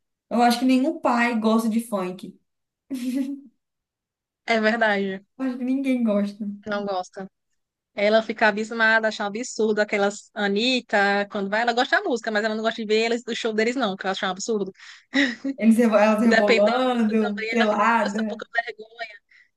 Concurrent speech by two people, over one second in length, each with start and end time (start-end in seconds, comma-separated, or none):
16.2-18.4